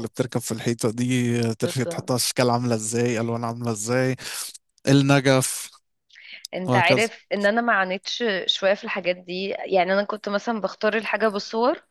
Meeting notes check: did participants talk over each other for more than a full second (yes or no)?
no